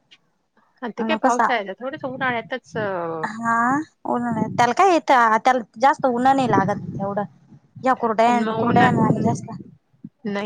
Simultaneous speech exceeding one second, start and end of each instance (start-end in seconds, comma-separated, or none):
none